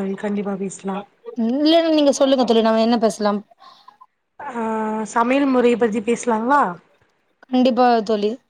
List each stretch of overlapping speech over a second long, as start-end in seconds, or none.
none